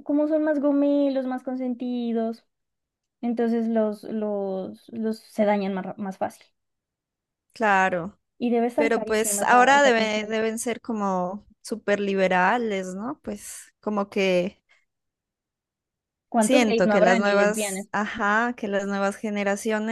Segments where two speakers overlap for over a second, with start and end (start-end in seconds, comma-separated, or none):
8.8-10.4, 16.4-17.9